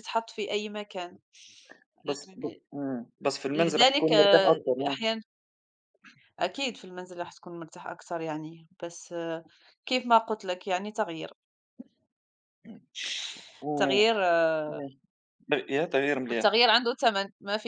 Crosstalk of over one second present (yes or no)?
yes